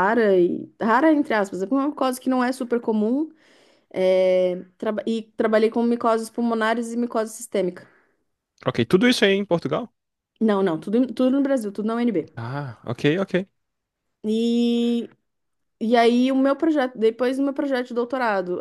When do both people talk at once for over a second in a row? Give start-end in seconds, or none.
none